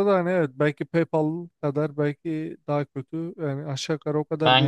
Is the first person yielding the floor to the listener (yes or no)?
yes